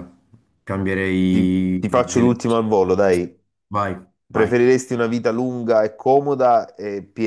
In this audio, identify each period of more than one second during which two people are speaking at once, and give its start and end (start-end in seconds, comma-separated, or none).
1.3-3.2